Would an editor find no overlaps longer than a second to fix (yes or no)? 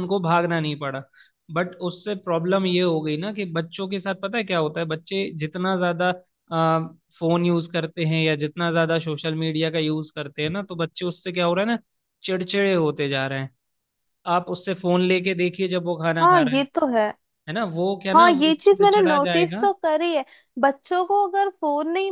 no